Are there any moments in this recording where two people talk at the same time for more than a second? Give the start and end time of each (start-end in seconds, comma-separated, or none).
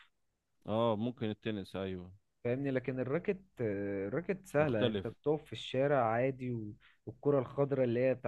none